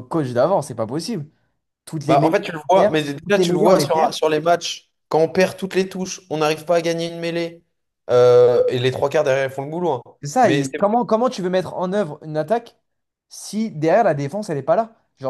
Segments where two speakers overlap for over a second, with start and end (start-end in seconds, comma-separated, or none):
2.1-4.2